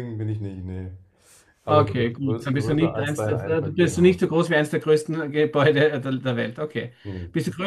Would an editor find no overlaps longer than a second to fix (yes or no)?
no